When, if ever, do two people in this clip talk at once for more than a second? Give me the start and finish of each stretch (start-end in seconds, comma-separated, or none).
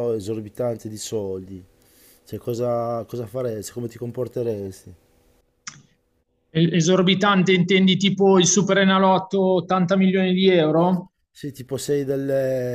none